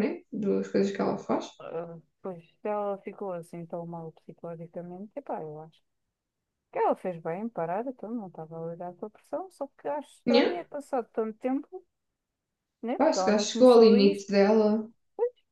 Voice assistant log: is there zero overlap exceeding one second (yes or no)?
no